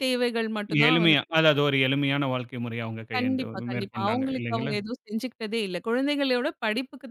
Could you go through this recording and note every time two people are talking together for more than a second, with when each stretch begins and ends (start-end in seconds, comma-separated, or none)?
3.2-4.7